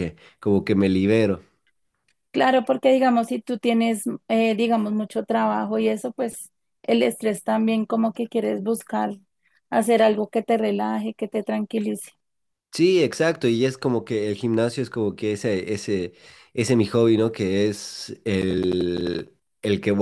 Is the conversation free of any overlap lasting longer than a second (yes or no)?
yes